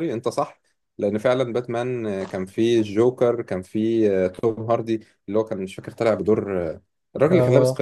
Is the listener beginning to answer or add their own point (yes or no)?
yes